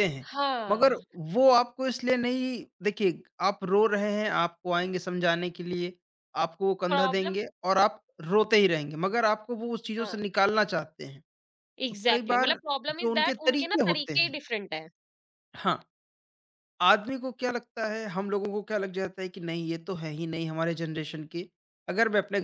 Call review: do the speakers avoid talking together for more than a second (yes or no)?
no